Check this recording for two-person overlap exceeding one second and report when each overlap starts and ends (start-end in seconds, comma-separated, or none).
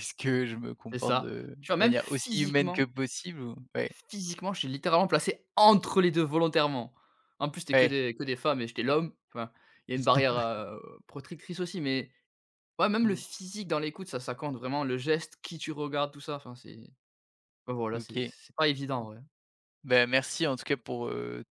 0.9-2.9